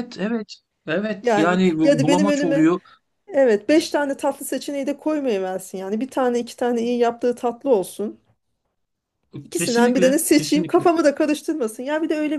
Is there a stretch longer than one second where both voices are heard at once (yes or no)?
yes